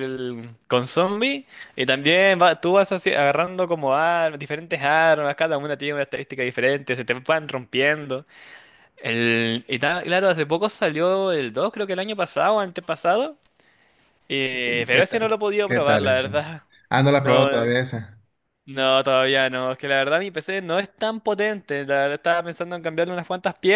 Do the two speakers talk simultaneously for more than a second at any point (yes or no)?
yes